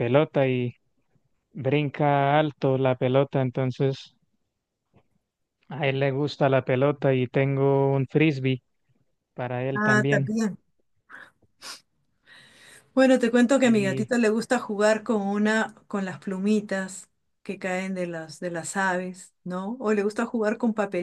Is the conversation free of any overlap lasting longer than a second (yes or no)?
yes